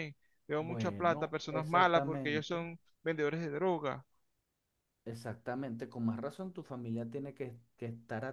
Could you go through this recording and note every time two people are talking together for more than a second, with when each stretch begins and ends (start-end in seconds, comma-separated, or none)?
0.6-2.7